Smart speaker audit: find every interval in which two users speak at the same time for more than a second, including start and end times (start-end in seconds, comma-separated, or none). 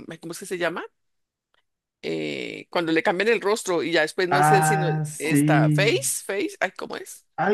4.3-6.0